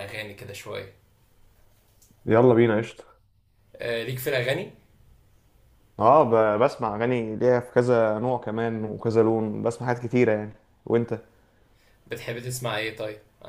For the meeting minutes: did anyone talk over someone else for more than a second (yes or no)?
no